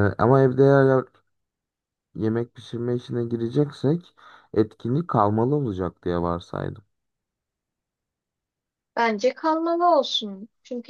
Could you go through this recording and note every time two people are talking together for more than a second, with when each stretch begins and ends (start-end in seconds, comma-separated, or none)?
none